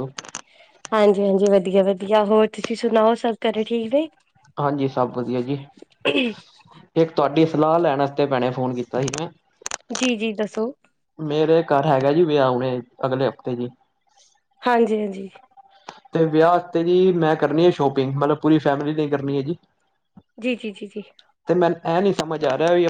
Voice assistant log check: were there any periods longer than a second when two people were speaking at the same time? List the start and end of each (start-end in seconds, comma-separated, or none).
none